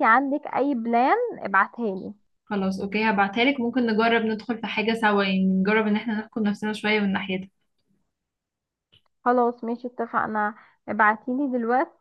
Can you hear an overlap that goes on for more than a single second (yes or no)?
no